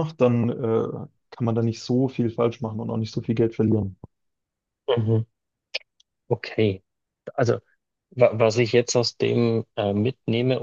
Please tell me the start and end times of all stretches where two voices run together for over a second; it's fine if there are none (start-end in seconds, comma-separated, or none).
none